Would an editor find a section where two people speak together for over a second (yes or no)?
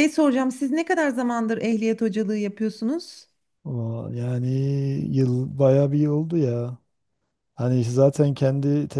no